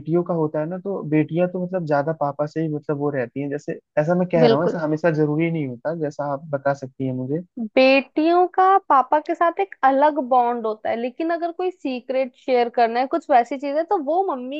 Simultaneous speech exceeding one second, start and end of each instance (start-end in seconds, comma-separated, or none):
none